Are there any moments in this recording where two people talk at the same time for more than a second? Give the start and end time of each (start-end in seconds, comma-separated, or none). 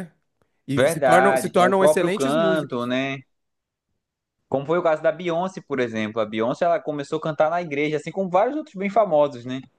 0.8-2.8